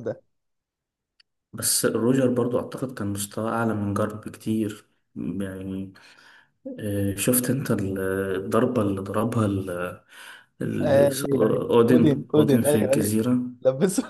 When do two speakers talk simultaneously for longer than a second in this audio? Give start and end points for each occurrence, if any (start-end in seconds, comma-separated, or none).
10.8-13.2